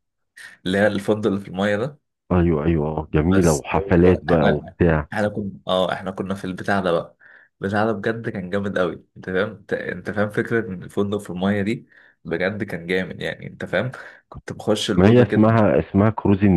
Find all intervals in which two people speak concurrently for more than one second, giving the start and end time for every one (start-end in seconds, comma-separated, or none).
3.3-4.8